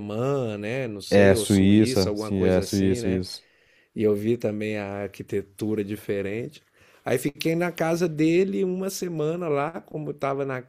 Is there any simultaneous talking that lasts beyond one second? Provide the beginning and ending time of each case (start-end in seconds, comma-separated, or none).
1.1-3.2